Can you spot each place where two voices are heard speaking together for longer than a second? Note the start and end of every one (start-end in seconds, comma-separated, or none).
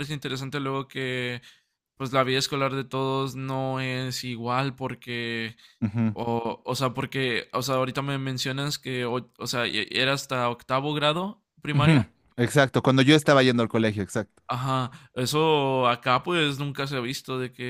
none